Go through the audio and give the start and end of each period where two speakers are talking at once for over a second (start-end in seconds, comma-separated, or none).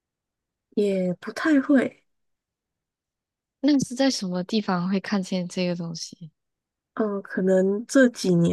none